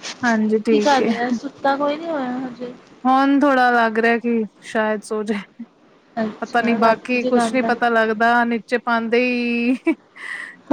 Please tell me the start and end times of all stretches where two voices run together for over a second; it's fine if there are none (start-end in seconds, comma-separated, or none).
6.4-7.7